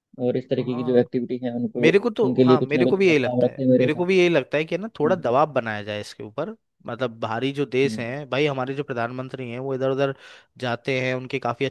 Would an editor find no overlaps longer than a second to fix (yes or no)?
no